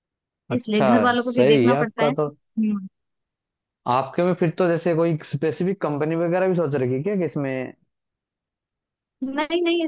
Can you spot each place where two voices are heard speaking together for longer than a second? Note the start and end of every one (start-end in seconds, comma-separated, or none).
0.5-2.1